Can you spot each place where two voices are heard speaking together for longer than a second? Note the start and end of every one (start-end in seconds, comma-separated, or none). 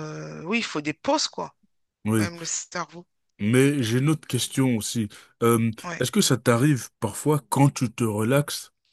none